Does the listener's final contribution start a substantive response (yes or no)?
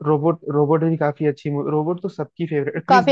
yes